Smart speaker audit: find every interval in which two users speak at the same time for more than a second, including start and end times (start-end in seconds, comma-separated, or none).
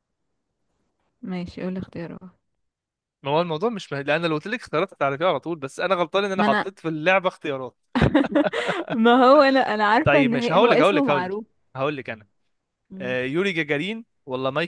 10.0-11.4